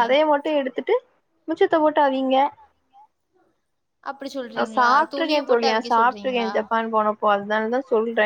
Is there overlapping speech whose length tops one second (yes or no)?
yes